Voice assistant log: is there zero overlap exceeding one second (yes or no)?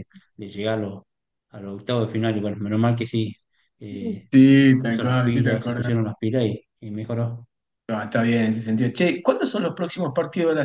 no